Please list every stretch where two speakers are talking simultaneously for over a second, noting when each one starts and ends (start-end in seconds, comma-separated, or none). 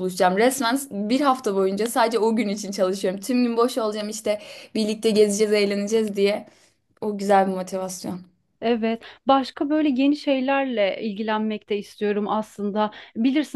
none